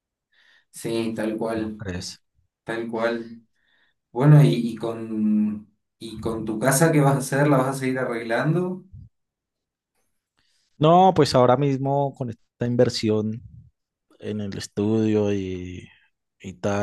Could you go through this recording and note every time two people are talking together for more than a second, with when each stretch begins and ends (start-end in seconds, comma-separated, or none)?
none